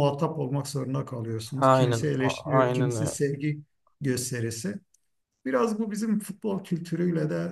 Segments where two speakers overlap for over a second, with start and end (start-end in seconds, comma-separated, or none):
1.6-3.2